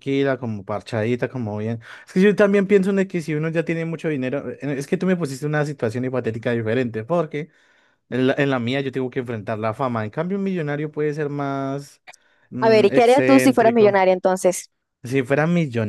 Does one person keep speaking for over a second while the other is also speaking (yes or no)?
yes